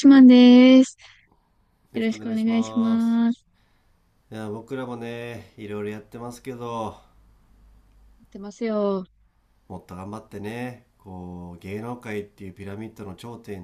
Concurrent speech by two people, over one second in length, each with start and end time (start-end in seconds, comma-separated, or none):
1.9-3.2